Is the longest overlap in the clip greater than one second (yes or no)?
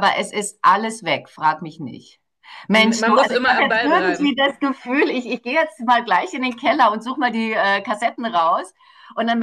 yes